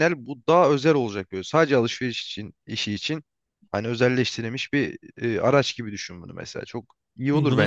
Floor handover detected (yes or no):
yes